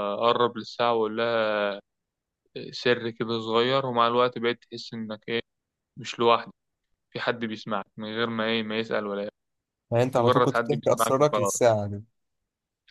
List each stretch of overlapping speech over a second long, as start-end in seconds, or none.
10.1-11.5